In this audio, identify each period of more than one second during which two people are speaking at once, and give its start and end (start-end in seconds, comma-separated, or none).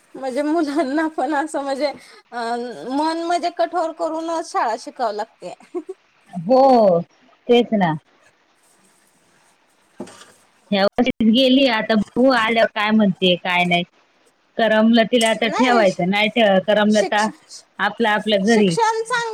none